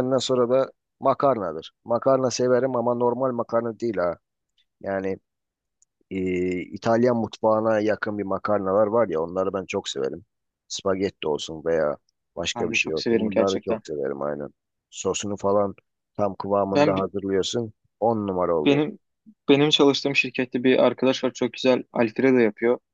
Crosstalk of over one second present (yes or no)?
yes